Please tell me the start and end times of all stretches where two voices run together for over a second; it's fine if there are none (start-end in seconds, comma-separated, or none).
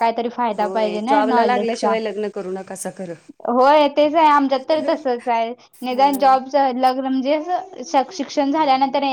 0.6-1.9